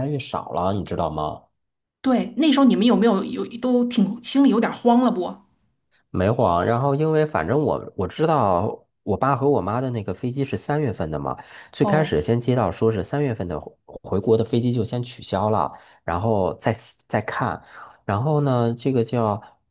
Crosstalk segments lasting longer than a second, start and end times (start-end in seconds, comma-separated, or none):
none